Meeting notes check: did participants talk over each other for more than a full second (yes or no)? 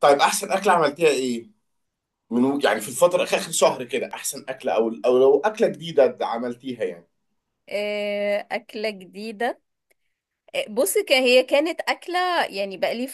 no